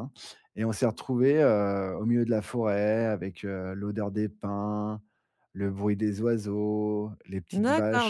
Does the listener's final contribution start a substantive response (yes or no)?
yes